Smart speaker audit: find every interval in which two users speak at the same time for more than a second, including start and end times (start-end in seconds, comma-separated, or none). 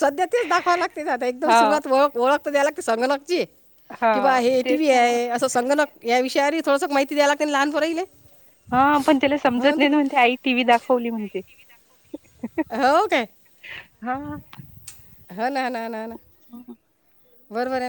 none